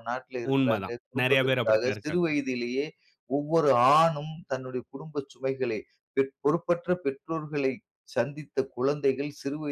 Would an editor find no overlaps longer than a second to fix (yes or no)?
no